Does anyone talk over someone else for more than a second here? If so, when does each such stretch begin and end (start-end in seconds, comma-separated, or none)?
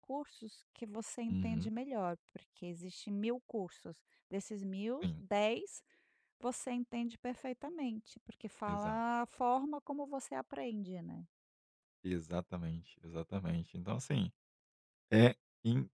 none